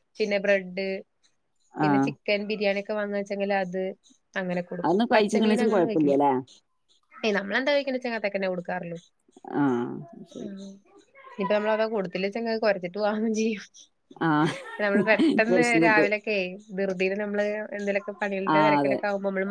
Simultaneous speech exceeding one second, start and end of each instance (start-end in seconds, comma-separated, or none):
4.8-6.2